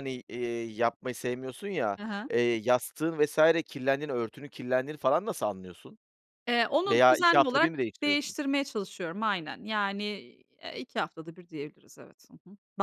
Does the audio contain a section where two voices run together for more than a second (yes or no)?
yes